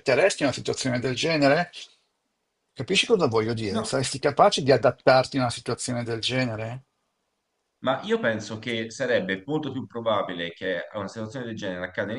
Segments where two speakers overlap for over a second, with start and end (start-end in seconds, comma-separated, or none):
none